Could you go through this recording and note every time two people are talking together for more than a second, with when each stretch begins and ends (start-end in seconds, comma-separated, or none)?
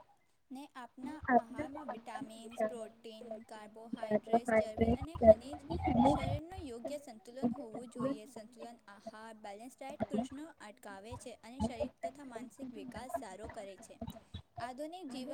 2.4-5.5